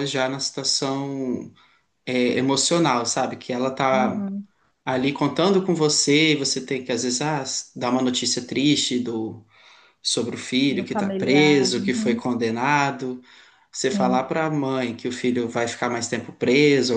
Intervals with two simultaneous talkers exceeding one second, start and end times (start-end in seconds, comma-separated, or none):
10.7-12.3